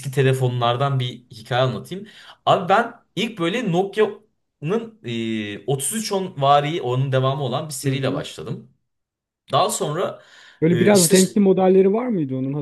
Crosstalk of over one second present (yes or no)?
no